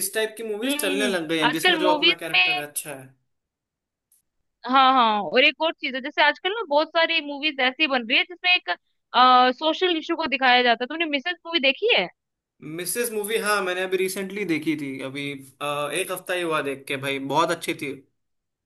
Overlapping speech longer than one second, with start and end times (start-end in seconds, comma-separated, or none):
0.6-2.6